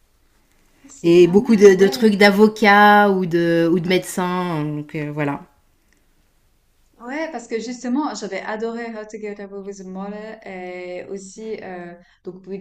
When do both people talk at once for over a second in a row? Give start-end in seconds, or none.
1.0-2.2